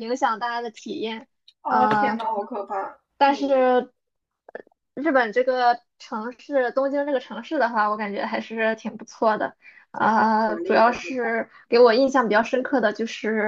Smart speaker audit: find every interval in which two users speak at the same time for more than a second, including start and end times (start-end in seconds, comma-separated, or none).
10.0-11.3